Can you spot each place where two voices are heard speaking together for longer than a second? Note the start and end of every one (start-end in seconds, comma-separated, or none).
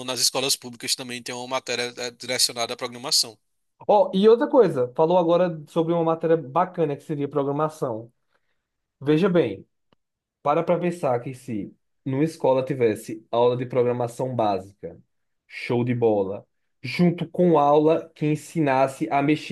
none